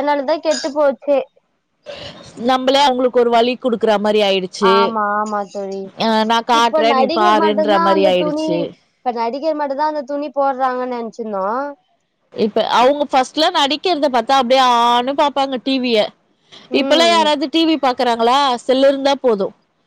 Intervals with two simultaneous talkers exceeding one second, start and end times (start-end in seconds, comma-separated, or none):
6.6-8.6